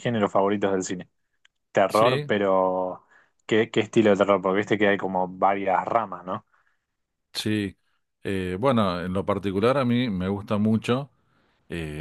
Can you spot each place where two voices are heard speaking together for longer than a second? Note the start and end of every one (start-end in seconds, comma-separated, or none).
none